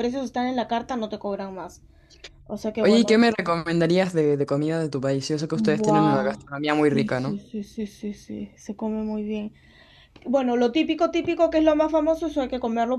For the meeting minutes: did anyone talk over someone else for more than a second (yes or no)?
yes